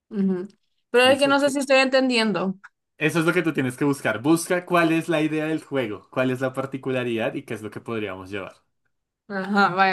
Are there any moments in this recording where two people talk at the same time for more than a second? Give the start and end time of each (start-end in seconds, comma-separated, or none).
none